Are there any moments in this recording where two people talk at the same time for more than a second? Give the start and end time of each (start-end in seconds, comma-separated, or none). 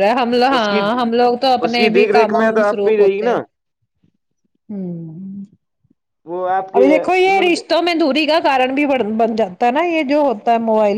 1.6-3.4